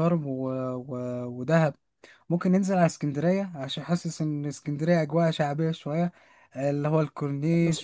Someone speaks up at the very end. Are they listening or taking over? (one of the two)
taking over